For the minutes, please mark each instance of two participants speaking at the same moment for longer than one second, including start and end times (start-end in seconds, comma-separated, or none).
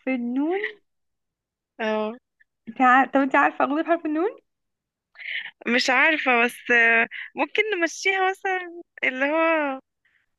none